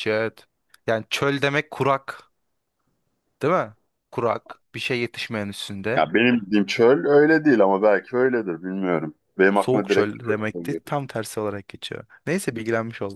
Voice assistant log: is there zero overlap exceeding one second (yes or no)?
no